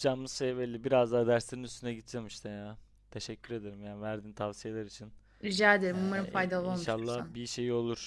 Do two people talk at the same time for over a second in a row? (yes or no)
yes